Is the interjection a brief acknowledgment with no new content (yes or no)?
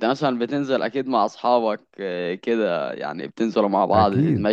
no